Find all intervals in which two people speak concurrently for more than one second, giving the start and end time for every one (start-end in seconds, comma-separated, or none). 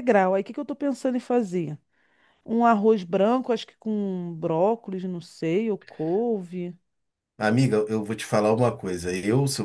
none